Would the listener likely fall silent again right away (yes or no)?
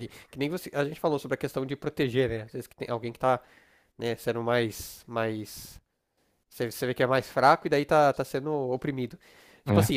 yes